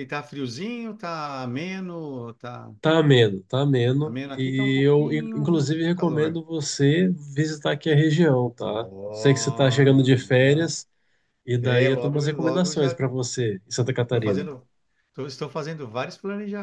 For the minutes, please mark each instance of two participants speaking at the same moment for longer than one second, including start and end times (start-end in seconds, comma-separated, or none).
4.0-6.4, 8.6-10.7, 11.6-12.9